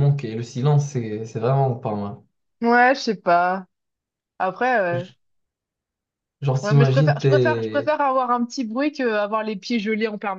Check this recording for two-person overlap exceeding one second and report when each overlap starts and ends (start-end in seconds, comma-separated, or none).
6.6-7.9